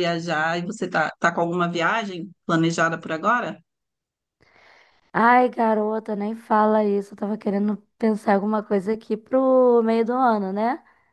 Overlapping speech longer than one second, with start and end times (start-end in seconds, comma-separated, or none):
none